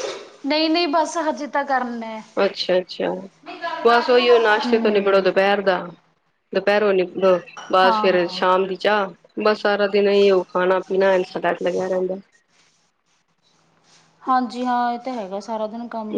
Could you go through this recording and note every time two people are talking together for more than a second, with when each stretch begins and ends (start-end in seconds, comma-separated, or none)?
3.9-5.3